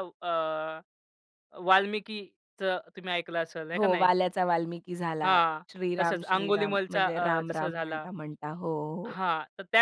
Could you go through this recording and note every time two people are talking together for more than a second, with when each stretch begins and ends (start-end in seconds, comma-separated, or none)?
5.2-8.1